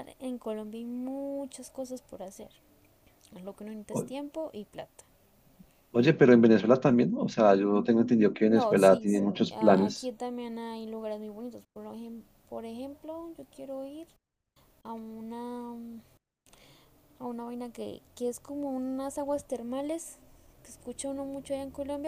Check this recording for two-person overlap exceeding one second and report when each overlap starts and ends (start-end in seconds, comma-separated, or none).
8.4-10.1